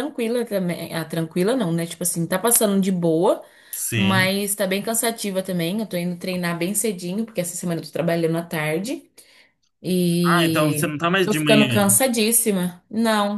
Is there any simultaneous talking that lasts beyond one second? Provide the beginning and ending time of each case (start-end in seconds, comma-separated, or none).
10.2-11.7